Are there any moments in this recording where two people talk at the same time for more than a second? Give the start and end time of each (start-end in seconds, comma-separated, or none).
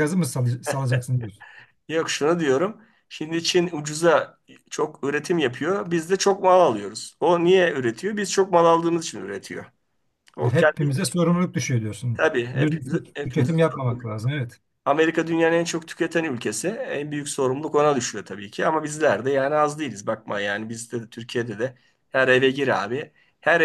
12.1-14.0